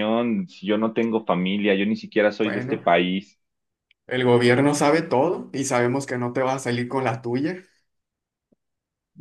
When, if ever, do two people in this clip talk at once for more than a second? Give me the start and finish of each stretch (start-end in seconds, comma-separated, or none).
none